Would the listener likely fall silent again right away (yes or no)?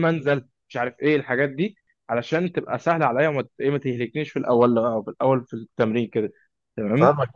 no